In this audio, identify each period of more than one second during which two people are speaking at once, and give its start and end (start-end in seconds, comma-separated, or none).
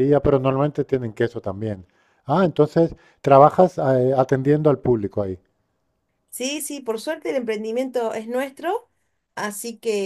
none